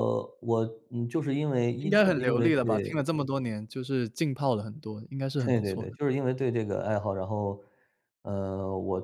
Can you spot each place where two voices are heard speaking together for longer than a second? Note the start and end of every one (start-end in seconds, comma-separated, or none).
1.8-3.0